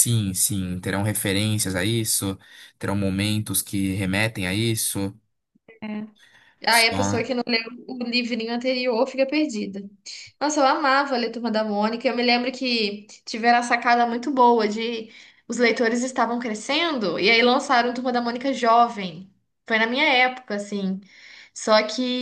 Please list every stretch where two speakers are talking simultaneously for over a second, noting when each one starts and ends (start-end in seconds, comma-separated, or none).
none